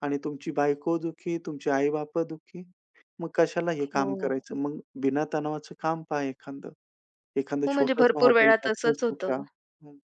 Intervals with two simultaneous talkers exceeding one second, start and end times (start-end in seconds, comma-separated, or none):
7.7-9.3